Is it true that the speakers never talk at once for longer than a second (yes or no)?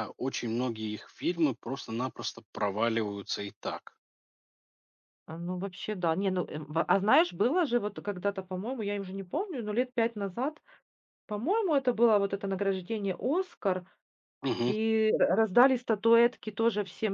yes